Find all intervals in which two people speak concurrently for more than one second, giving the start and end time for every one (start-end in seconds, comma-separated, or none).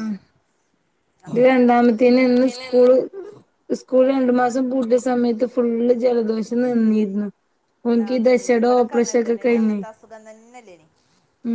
8.1-9.8